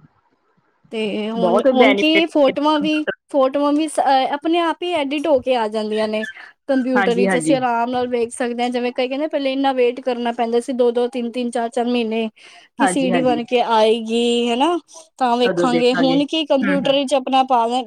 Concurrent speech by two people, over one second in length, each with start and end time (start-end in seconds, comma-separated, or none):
15.4-16.9